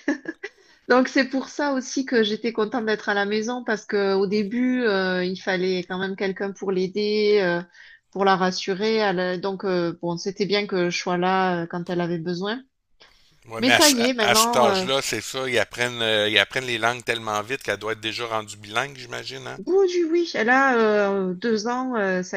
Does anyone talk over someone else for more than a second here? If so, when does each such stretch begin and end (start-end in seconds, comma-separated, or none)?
13.6-14.8